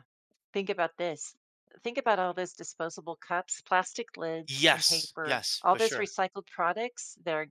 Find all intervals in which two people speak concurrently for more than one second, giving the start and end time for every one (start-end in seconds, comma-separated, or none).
4.5-6.1